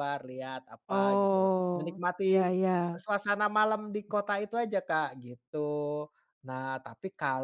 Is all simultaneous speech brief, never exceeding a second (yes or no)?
no